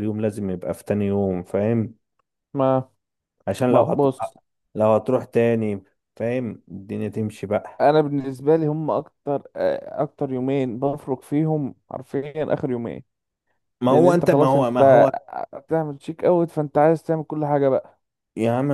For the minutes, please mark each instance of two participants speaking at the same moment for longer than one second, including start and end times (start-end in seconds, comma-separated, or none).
13.9-15.1